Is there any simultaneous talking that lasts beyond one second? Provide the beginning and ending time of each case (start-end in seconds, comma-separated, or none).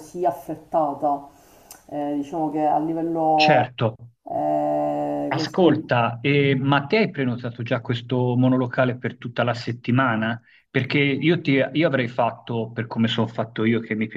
none